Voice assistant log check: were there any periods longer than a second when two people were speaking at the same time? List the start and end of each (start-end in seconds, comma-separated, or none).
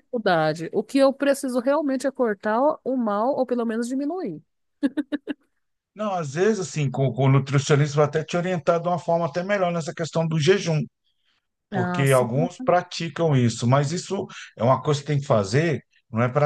none